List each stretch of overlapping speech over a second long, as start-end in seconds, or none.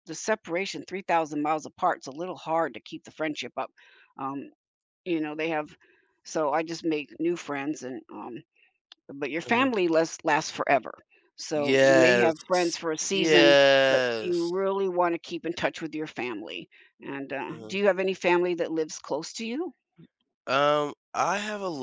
11.5-14.5